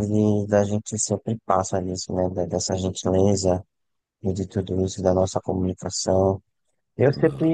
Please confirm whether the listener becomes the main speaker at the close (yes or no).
no